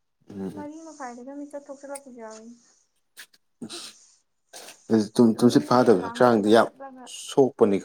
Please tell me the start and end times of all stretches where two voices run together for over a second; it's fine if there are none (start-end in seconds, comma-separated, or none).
5.3-6.7